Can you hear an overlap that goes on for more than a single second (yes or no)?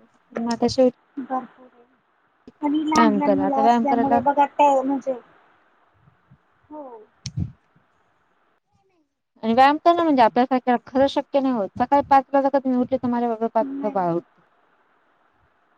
yes